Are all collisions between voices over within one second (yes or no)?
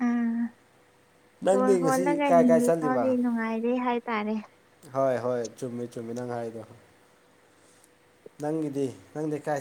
no